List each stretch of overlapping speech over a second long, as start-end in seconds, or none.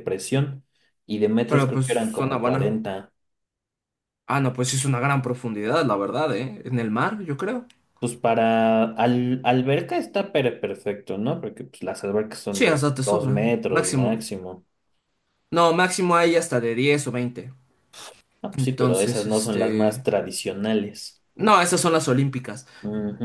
1.5-2.8, 12.5-14.3, 18.6-20.1